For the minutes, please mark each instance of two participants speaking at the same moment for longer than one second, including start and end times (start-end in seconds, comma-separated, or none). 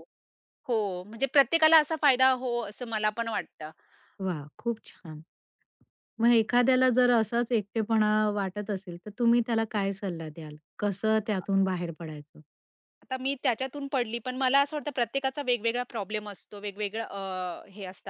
none